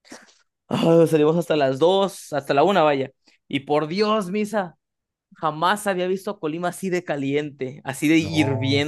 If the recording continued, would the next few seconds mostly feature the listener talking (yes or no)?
yes